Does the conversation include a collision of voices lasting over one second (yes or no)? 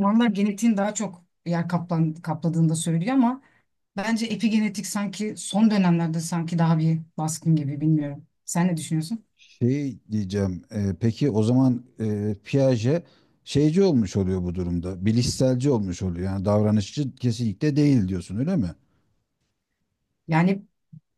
no